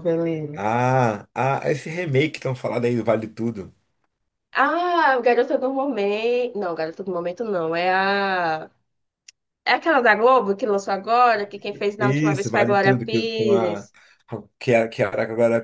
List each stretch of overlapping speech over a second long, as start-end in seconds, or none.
12.0-13.9